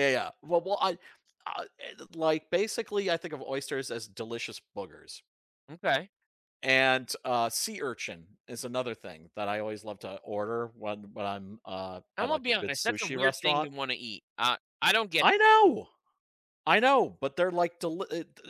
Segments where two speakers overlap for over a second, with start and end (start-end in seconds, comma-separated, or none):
12.2-13.7